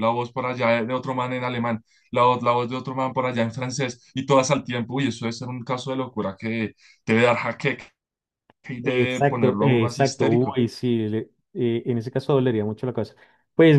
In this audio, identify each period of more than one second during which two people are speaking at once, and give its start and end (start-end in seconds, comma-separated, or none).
8.8-10.6